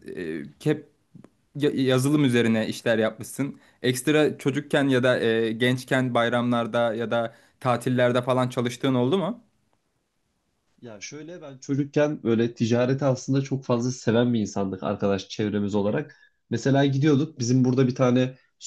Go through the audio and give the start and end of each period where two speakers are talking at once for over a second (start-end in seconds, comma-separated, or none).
none